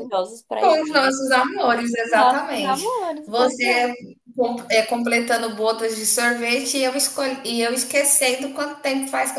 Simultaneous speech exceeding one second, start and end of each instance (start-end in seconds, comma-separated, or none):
2.1-3.9